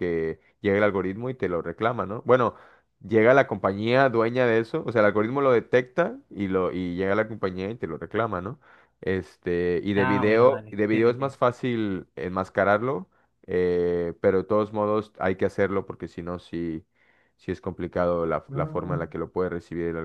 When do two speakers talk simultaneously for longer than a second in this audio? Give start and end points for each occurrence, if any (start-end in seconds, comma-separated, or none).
9.9-11.3